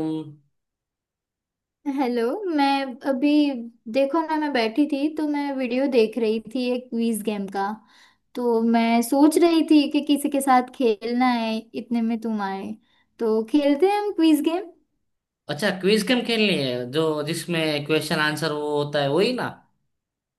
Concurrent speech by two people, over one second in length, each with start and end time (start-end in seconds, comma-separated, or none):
none